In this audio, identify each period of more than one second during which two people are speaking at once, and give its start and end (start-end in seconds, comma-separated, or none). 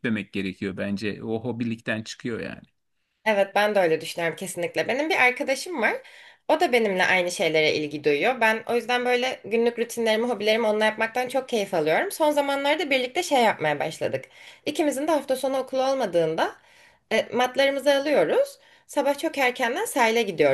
none